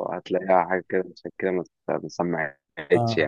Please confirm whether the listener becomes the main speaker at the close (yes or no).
yes